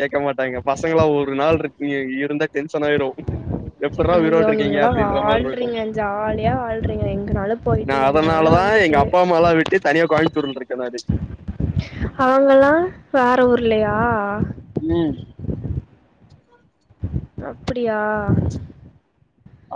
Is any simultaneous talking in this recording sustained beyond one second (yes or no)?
yes